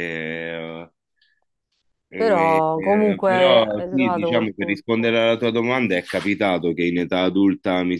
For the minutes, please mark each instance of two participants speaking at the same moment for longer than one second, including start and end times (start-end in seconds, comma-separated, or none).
2.2-4.8